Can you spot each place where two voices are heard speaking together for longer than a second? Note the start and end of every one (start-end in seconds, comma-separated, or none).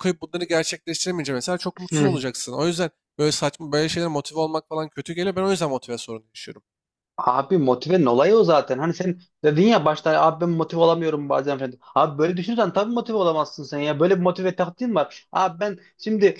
none